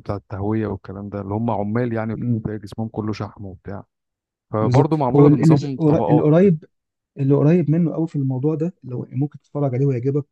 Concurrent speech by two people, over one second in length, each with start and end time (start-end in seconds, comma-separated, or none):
4.6-6.5